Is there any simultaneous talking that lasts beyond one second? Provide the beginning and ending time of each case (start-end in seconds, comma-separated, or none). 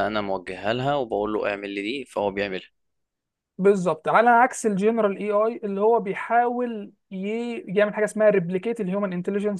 none